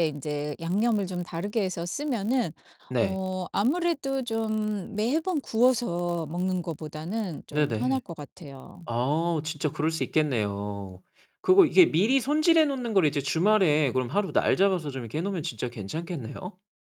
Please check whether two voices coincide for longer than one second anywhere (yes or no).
no